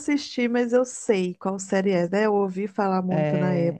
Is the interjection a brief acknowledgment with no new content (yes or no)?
no